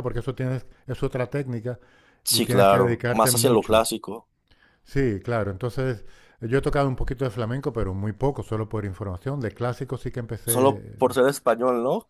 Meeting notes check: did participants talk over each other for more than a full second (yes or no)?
yes